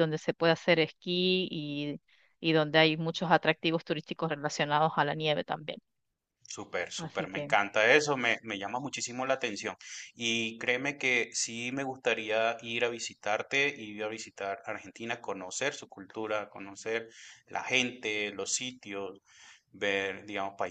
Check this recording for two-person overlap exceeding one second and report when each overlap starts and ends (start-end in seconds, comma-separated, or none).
none